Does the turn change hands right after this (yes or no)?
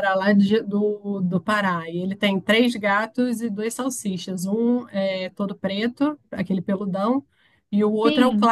no